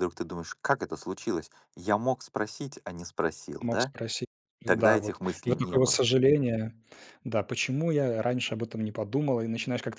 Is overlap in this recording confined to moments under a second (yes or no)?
no